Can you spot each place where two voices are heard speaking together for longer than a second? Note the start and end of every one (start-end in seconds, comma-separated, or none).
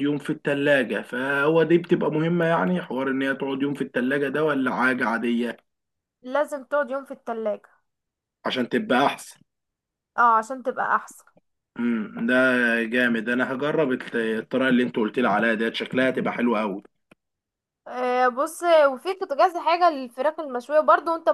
none